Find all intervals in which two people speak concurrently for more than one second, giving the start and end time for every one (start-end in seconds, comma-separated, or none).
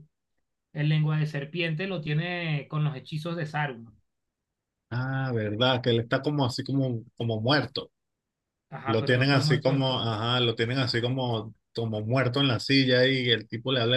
8.9-10.1